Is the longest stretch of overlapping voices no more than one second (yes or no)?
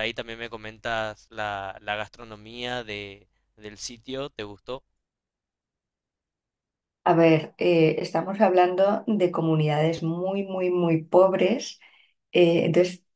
yes